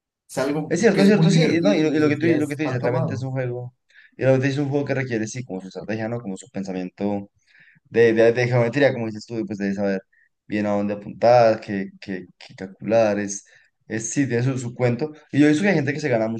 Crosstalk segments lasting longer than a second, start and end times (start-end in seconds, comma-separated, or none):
0.7-3.3